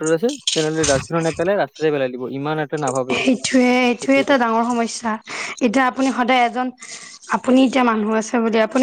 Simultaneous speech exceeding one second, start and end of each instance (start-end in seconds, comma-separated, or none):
none